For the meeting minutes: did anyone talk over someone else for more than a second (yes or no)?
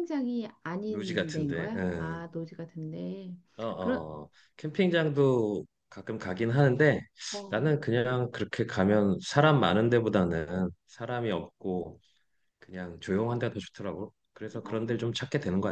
yes